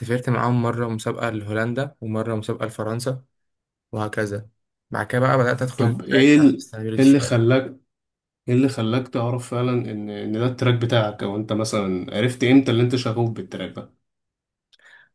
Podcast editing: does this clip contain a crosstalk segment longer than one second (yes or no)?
yes